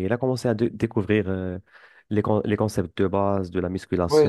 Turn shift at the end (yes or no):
yes